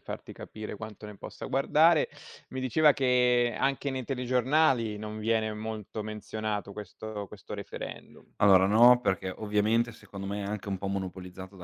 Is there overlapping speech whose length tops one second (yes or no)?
no